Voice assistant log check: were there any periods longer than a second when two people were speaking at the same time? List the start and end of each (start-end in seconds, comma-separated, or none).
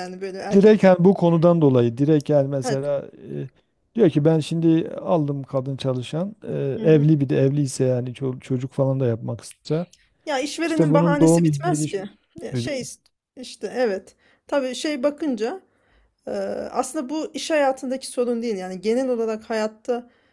10.7-11.9